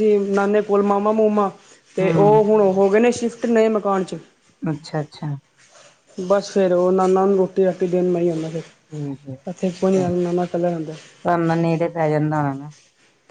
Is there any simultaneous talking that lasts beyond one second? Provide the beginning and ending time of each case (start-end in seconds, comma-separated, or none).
none